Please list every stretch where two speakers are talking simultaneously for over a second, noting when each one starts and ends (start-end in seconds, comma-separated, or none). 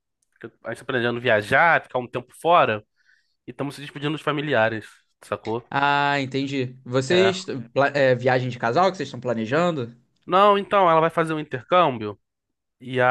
none